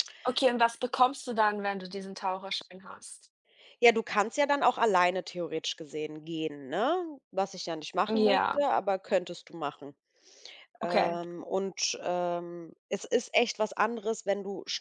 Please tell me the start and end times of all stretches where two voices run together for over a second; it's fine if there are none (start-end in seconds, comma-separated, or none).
none